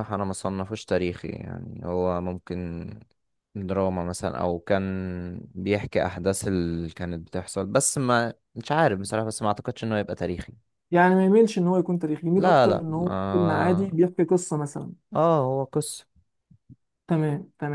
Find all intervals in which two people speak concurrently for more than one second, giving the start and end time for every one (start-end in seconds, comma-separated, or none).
12.4-13.8